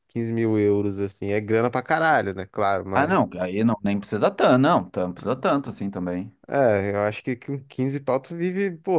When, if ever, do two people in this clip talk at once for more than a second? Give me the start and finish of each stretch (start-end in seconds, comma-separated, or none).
none